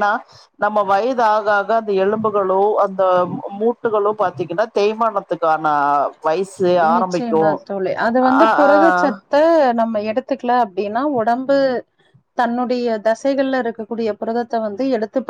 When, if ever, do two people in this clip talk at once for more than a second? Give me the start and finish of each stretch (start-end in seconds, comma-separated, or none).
none